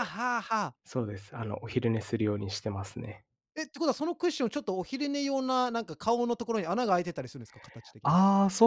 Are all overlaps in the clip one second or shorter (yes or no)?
yes